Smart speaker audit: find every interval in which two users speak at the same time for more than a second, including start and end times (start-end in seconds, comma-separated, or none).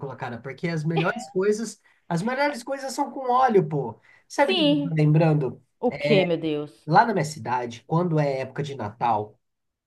none